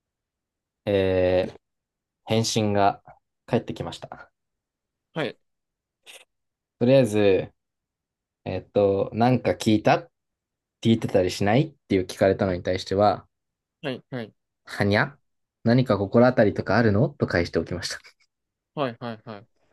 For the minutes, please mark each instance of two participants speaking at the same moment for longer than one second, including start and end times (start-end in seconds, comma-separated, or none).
none